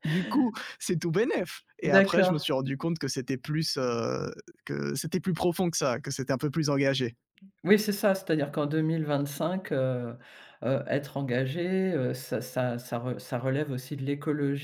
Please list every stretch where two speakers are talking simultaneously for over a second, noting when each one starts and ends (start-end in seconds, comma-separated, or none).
none